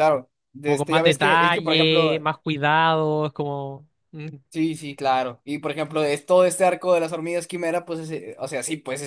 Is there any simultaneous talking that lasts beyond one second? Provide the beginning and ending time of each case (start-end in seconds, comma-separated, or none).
0.6-2.1